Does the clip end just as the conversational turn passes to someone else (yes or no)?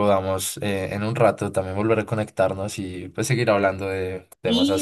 yes